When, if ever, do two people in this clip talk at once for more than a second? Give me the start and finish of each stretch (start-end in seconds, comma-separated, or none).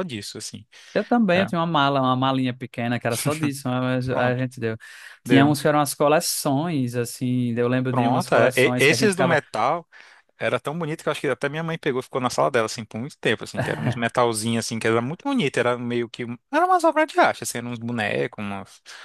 7.9-9.4